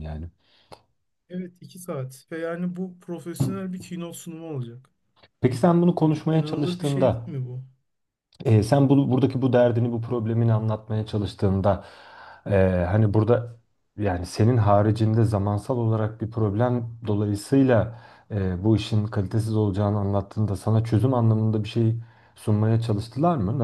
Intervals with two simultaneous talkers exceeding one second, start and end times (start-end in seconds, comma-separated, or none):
6.0-7.3